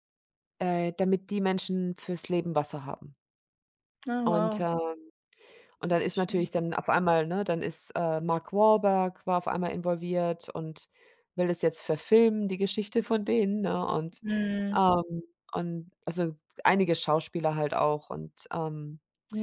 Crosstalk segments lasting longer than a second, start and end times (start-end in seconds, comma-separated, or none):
none